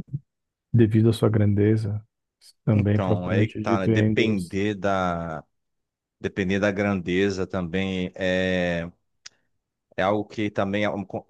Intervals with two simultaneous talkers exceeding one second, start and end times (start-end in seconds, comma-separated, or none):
2.7-4.6